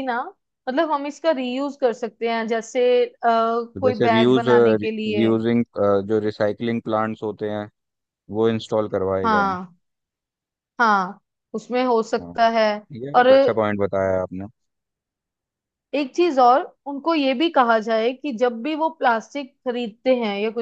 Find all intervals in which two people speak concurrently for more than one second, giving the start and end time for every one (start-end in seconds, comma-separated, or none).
3.7-5.3